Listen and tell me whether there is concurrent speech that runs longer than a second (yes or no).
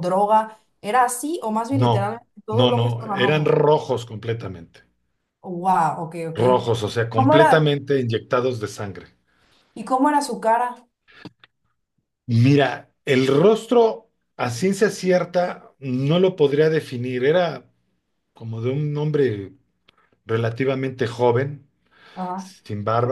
yes